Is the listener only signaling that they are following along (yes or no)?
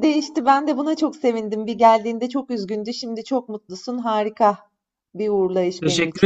no